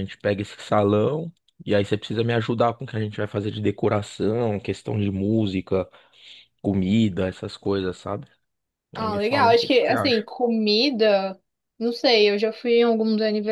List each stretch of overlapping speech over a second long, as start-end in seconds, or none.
9.0-10.2